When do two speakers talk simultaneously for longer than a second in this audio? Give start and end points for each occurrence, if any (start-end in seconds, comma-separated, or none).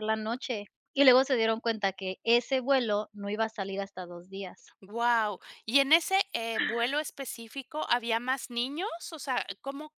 none